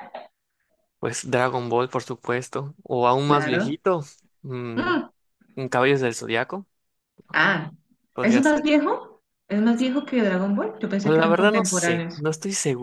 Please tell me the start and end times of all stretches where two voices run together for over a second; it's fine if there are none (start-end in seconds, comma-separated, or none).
11.0-12.2